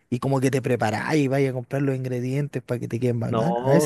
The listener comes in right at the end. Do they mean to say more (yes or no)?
yes